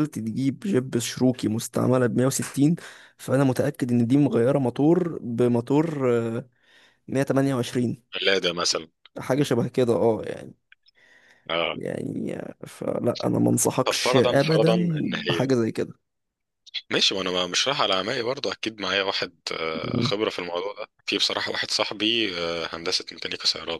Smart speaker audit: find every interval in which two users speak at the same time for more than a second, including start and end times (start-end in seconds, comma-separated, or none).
13.8-15.5